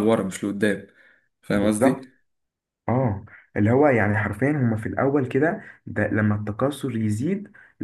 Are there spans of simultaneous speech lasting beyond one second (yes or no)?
no